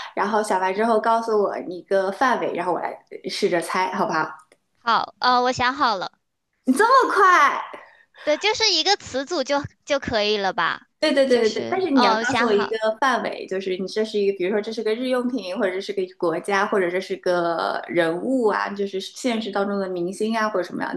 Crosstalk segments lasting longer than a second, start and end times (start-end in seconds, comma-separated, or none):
11.3-12.7